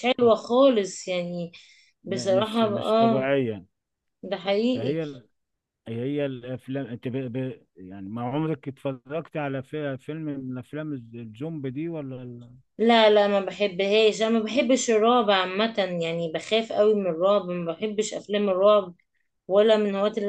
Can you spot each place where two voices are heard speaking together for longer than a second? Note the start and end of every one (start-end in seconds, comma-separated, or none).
2.1-3.3